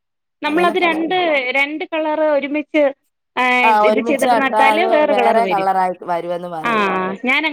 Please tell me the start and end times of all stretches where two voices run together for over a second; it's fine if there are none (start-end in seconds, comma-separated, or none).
3.7-5.7